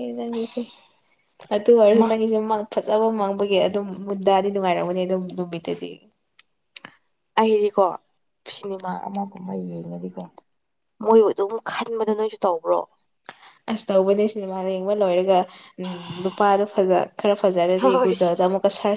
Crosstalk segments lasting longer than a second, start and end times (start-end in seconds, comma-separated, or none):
none